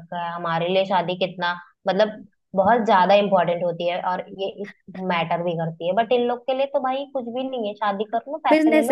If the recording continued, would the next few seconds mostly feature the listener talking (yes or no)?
yes